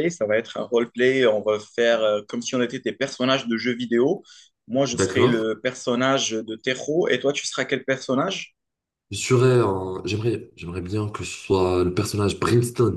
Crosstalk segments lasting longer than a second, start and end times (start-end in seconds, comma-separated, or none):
none